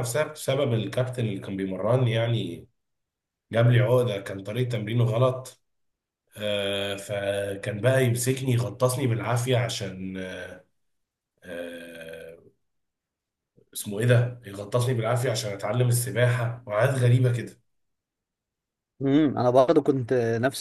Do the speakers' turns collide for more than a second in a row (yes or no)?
no